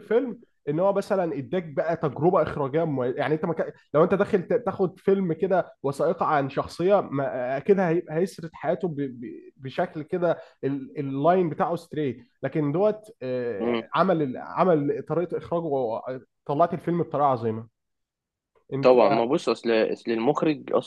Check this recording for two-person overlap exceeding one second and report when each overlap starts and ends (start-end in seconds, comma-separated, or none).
none